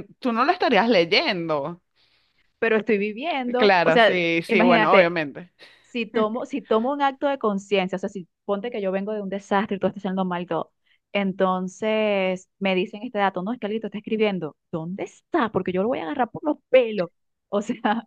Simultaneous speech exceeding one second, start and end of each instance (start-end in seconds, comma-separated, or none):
3.6-5.1